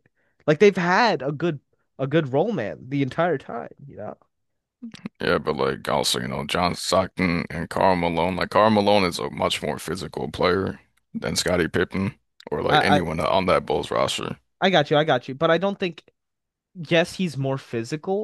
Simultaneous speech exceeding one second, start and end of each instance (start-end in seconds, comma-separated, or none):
none